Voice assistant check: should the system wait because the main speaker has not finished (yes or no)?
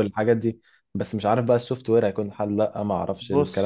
no